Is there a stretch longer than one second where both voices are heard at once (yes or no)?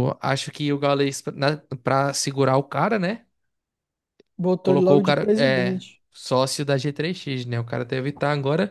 yes